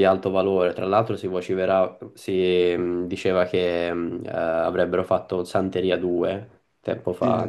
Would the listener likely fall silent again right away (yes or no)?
no